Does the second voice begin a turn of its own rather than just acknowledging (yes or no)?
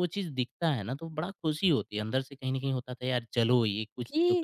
yes